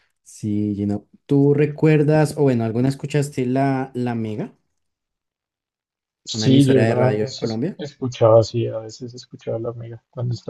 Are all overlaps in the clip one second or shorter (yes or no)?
no